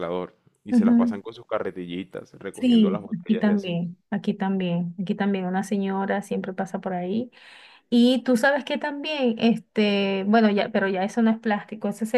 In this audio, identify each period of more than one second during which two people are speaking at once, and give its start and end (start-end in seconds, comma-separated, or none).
2.5-3.8